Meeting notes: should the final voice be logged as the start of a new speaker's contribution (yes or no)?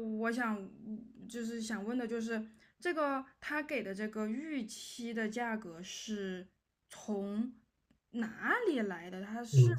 yes